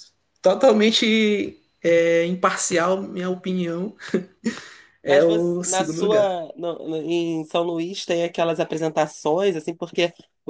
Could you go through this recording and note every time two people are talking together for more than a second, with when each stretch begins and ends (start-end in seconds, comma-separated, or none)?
5.0-6.4